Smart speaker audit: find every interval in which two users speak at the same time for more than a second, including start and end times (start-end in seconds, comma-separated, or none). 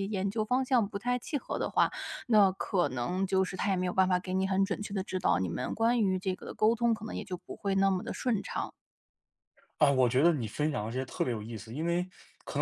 none